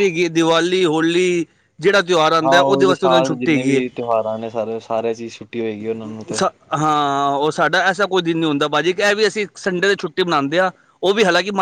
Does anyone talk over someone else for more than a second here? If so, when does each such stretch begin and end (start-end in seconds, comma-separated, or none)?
2.5-3.8